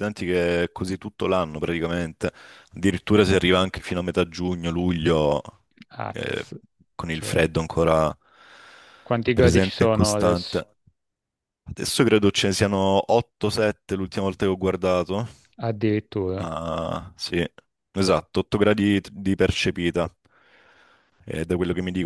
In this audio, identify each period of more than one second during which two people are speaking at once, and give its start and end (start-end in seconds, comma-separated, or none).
9.3-10.6